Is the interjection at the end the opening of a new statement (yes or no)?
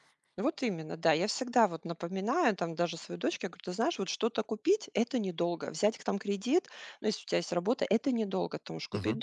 no